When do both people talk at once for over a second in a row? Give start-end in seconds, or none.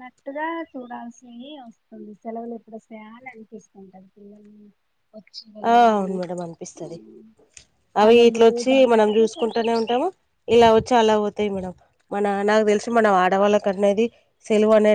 8.0-9.9